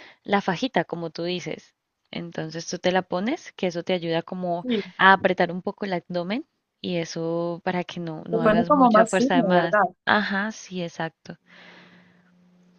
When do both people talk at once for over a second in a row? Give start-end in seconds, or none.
8.3-9.8